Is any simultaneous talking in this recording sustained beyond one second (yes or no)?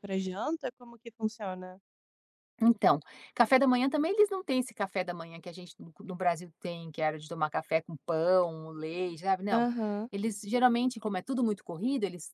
no